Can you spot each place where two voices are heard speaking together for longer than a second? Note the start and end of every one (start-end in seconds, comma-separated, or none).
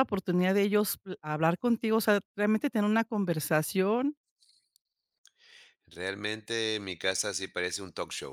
none